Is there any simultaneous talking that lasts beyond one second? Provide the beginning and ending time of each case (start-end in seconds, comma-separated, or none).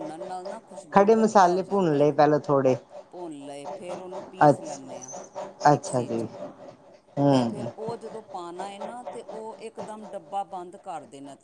0.9-2.1